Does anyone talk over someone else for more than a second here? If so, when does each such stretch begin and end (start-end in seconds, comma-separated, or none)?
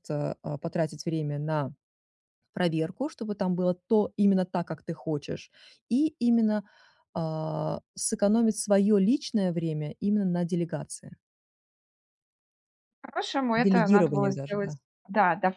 13.6-14.8